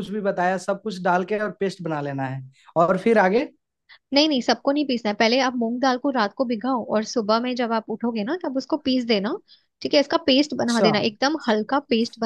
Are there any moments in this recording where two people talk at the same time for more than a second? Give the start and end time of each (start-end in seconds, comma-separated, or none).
none